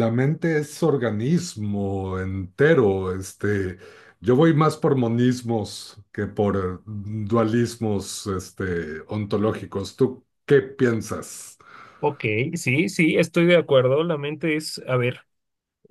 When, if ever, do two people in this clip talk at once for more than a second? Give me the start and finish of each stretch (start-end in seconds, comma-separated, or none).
none